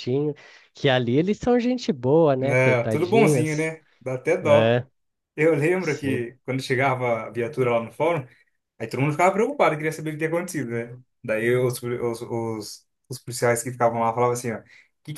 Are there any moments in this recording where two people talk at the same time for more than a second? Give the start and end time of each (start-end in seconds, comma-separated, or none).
2.4-3.7